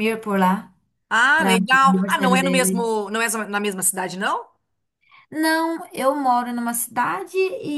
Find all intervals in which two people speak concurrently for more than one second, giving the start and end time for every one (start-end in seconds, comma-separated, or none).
1.4-2.9